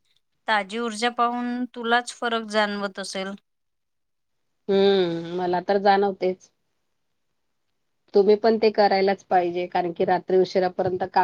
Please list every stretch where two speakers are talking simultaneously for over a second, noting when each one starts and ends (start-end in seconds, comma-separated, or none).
none